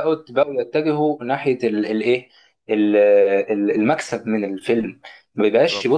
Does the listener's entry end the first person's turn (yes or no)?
no